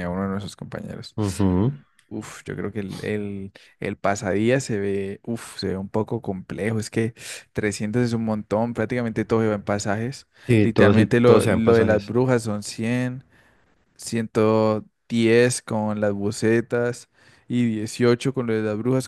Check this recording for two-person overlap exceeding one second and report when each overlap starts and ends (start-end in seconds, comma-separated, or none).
10.5-12.1